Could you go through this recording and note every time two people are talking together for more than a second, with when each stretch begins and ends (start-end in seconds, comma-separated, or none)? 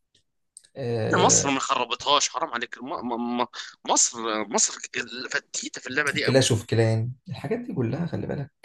none